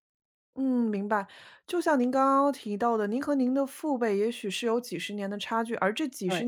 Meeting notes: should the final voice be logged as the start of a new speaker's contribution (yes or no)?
no